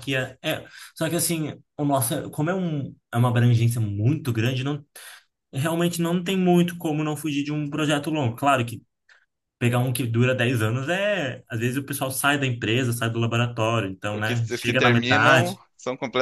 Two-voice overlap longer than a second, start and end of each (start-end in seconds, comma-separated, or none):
14.1-15.6